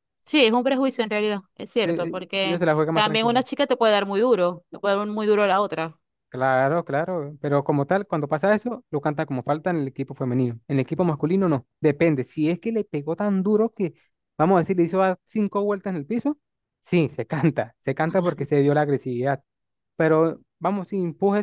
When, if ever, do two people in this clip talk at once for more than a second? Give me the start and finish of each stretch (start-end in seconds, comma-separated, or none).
1.8-3.4